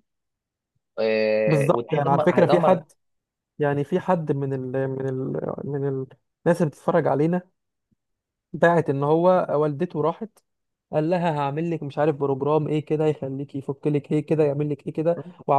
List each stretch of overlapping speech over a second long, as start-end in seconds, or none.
1.5-2.8